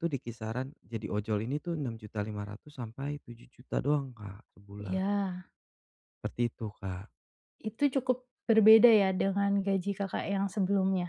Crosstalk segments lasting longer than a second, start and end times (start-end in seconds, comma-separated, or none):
none